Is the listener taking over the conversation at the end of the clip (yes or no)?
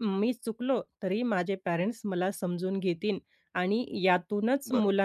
no